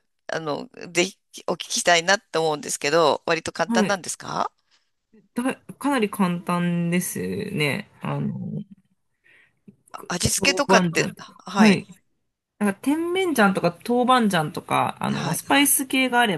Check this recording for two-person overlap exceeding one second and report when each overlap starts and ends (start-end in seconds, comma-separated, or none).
10.1-11.8